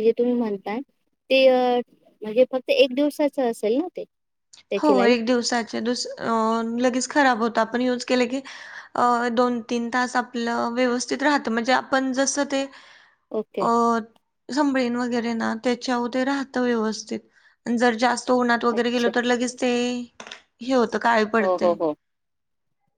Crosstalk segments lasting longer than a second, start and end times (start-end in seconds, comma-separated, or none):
none